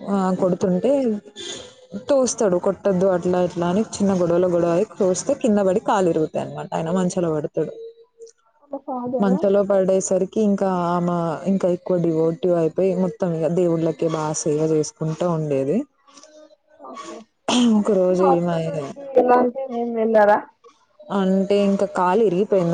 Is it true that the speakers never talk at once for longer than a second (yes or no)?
yes